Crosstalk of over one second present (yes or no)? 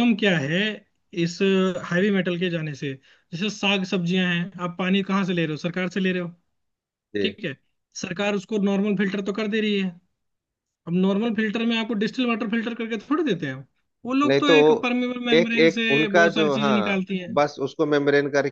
yes